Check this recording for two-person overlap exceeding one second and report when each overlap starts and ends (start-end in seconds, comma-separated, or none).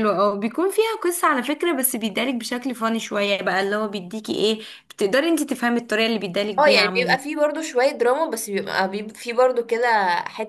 none